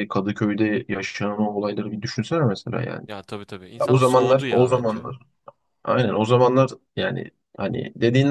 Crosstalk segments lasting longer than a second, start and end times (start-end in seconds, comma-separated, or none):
3.8-5.0